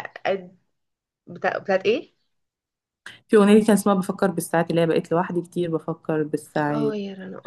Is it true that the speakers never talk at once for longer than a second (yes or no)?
yes